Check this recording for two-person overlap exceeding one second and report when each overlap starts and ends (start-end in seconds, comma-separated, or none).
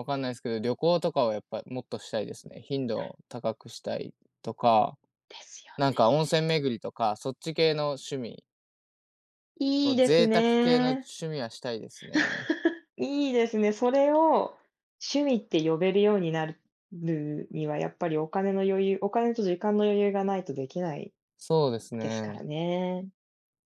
9.8-11.1